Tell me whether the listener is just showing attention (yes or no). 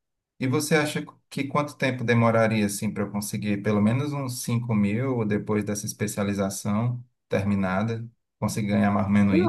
no